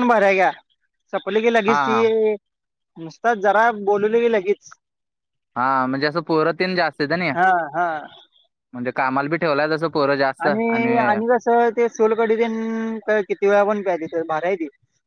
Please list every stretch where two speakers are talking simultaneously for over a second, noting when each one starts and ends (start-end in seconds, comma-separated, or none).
none